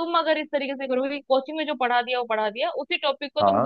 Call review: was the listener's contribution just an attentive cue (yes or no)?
yes